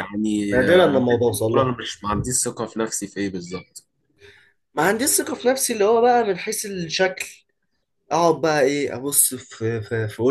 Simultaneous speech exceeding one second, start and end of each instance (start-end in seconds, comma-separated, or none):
0.5-1.7